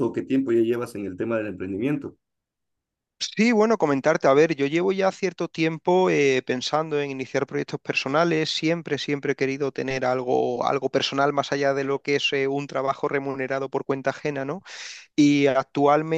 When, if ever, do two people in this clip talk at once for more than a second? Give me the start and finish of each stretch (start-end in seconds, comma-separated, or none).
none